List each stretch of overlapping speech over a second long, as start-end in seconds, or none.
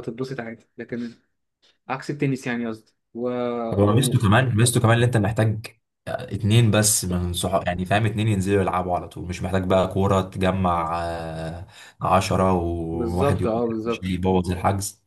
12.9-14.2